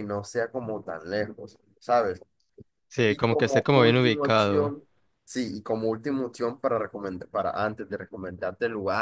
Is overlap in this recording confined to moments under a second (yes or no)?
no